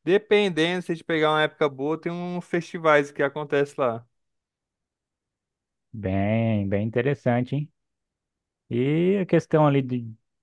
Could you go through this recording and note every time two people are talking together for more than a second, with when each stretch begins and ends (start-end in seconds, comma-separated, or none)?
none